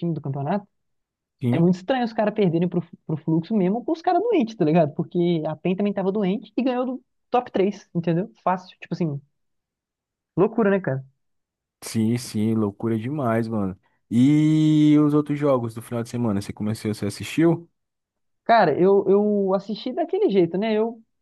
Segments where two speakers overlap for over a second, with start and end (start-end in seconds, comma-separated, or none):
none